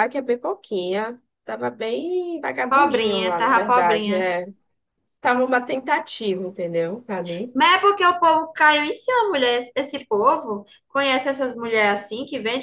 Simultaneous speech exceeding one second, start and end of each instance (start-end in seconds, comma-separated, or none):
2.7-4.3